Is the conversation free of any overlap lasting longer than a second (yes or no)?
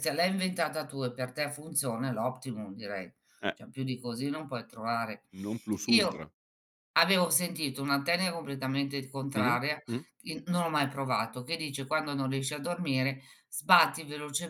yes